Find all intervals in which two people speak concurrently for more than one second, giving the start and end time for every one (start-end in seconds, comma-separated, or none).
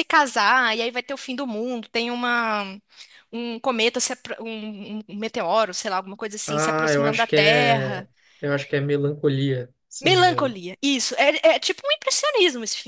6.5-8.1